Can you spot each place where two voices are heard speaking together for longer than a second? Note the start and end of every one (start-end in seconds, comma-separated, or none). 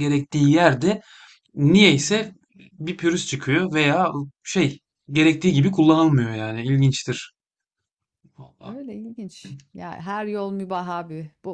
none